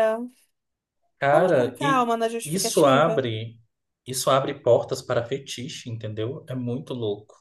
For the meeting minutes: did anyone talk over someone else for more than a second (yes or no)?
yes